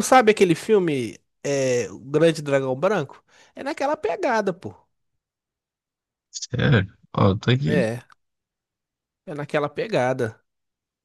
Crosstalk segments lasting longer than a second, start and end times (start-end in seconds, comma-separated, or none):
none